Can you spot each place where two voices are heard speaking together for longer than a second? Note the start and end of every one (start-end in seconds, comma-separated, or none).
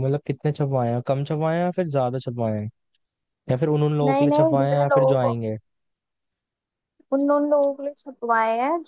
4.1-5.3